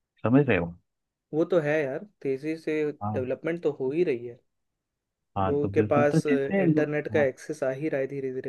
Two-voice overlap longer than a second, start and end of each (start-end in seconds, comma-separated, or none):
5.5-7.2